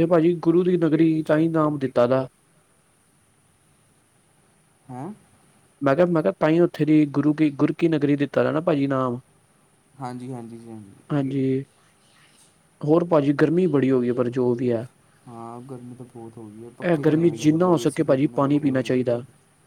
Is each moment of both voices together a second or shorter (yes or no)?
no